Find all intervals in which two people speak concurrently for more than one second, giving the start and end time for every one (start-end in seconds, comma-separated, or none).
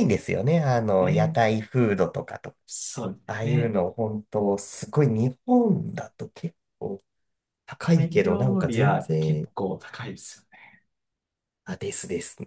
7.9-9.5